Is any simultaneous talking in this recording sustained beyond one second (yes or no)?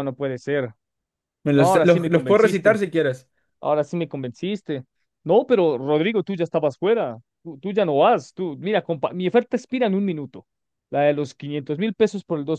yes